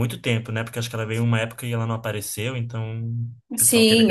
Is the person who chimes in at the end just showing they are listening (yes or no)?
no